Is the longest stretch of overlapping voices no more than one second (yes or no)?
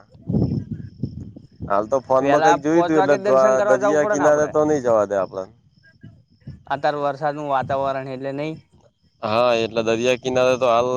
no